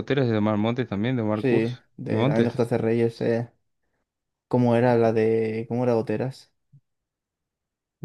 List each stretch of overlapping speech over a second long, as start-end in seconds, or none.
1.3-2.6